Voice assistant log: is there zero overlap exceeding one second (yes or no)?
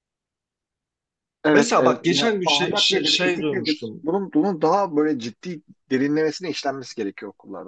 no